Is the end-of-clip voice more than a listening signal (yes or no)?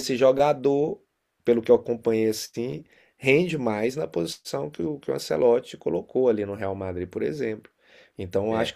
no